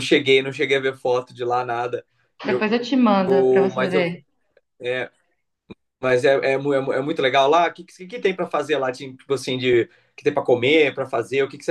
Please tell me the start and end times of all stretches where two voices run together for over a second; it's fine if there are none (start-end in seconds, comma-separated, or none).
none